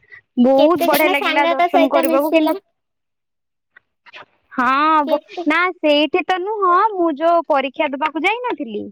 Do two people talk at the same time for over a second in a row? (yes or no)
yes